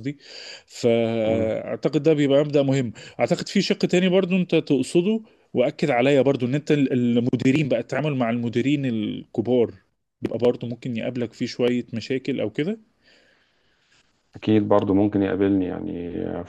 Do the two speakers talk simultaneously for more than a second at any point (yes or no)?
no